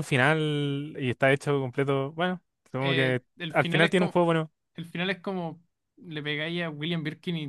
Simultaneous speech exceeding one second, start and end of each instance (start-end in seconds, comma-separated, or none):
2.8-4.2